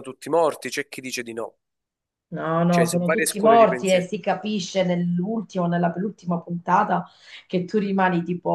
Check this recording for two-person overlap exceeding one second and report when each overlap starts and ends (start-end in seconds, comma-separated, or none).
2.7-4.1